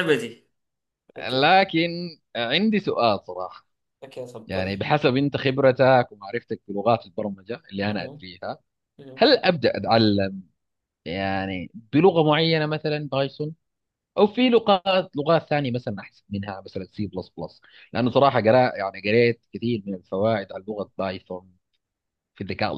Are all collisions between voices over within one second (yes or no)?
yes